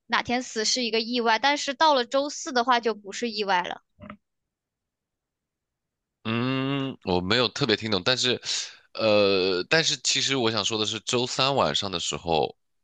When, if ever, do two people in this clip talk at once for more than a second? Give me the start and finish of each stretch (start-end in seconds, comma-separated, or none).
none